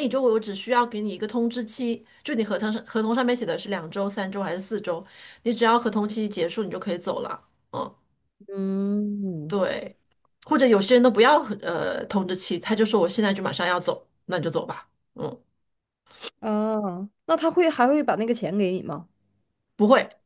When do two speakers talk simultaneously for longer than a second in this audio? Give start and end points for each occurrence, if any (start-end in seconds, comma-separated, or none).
none